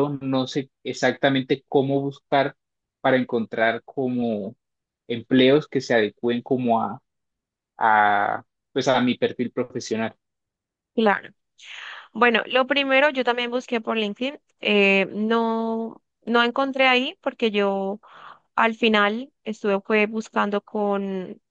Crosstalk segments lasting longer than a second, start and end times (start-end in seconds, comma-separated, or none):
none